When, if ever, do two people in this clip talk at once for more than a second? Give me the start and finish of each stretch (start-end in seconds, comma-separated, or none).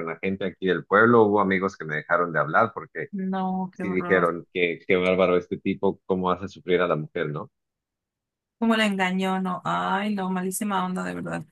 none